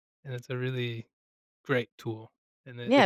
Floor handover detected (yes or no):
yes